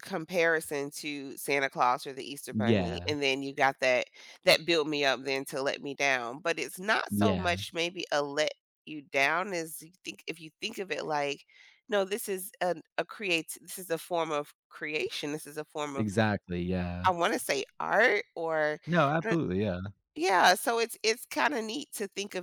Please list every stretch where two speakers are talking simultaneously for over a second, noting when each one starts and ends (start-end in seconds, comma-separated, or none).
none